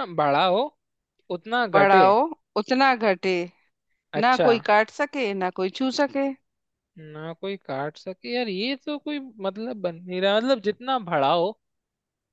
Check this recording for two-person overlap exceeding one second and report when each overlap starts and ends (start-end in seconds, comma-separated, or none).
none